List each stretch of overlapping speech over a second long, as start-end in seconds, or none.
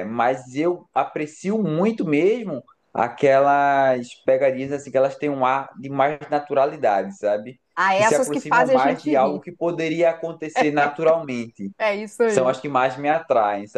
7.8-9.4